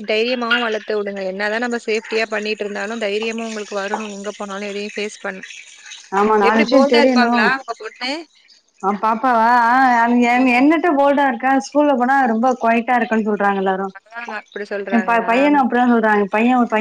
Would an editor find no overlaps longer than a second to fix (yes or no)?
yes